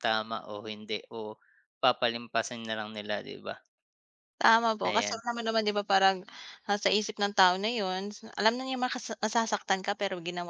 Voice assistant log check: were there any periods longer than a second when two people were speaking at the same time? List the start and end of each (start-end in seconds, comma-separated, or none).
none